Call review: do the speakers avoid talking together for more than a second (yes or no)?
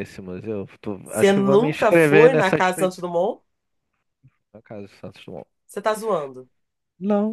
no